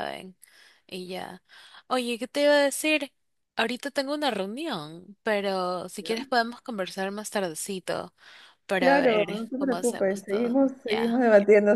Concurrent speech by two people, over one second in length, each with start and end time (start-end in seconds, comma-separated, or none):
8.8-11.2